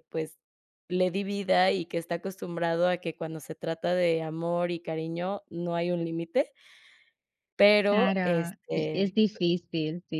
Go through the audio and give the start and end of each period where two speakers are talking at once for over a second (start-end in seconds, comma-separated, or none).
7.9-9.1